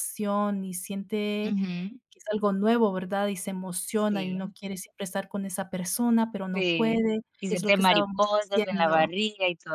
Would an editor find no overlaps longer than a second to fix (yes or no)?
no